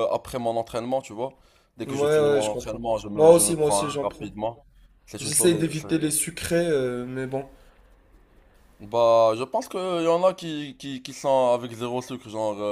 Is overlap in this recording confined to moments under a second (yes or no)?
no